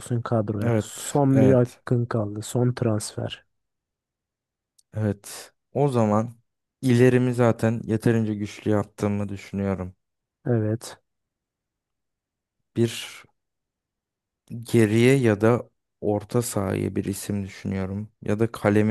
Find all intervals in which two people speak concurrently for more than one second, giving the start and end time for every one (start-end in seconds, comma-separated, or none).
0.6-1.8